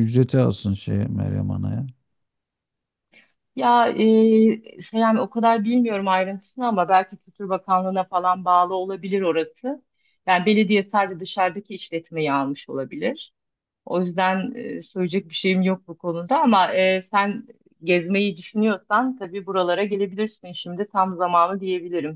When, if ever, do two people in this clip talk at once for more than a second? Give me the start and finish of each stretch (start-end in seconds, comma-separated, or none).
none